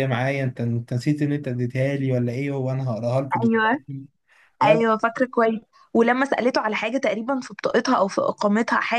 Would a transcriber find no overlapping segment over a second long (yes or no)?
yes